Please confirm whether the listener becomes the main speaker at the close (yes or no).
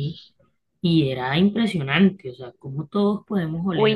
yes